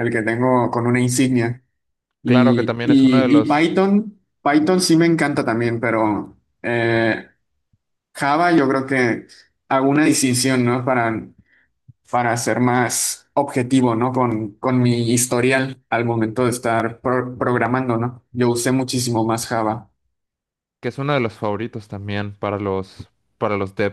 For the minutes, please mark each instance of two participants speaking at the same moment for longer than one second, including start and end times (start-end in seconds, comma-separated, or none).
2.2-3.7